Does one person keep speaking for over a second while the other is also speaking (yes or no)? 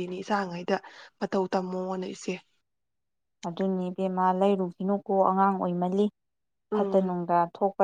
no